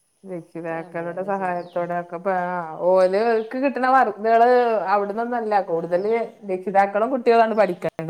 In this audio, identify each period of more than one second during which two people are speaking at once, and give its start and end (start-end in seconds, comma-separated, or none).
none